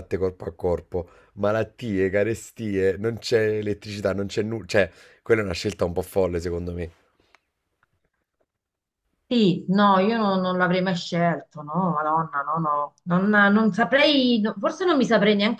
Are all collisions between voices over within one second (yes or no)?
yes